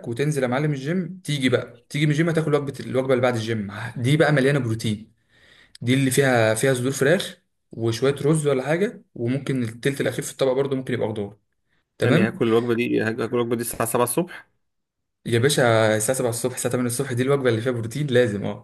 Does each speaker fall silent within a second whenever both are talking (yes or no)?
yes